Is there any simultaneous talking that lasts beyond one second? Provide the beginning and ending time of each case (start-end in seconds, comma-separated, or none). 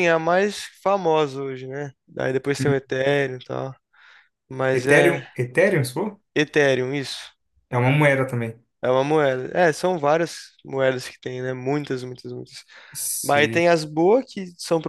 none